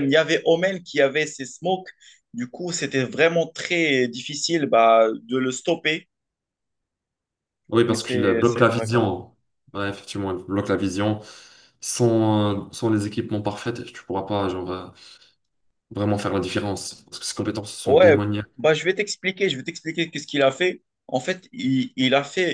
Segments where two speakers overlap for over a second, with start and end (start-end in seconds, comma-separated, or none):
7.9-9.1